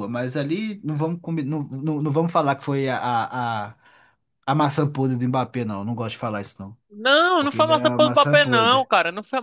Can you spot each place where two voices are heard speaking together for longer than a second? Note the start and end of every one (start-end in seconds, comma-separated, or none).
7.4-8.9